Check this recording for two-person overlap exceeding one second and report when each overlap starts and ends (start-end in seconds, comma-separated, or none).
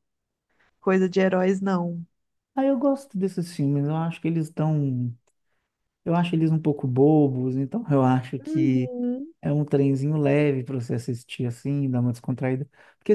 none